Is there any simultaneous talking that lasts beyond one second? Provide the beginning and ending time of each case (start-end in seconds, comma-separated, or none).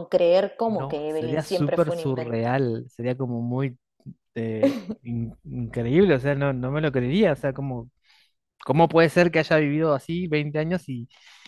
0.7-2.5